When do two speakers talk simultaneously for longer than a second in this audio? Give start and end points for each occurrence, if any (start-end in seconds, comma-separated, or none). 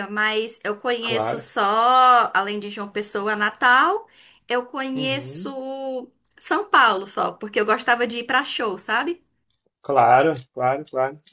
none